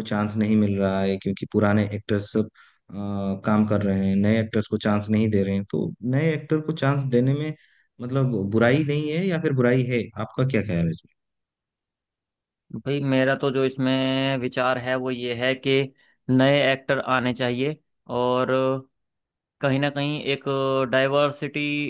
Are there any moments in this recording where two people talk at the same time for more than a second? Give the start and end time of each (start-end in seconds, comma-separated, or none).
none